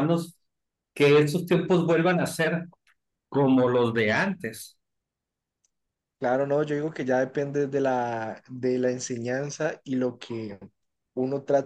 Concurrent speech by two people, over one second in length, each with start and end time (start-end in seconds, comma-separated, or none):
none